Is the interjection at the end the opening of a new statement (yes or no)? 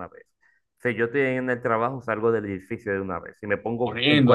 yes